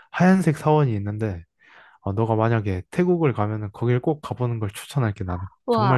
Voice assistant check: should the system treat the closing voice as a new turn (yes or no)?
yes